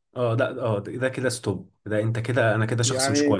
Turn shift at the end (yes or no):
yes